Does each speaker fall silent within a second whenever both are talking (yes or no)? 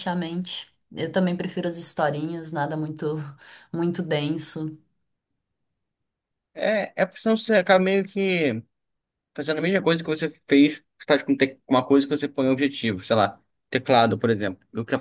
yes